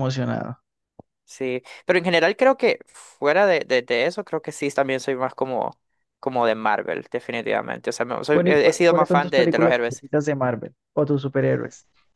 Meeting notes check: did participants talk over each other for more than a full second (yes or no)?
yes